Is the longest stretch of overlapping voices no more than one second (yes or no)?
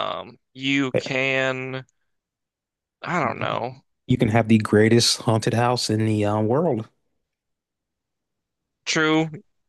yes